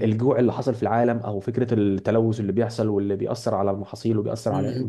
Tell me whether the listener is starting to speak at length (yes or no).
yes